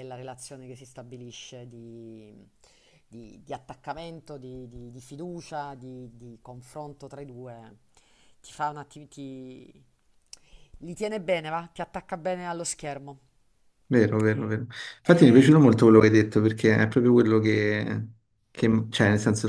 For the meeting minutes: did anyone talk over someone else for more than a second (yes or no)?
no